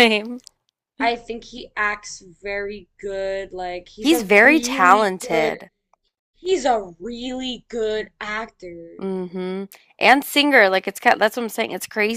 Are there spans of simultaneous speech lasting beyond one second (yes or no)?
yes